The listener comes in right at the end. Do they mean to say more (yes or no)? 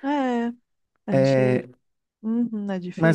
yes